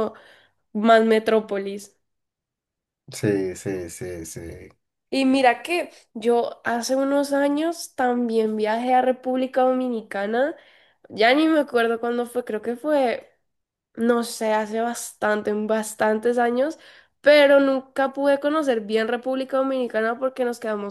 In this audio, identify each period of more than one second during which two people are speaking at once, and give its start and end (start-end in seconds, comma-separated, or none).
none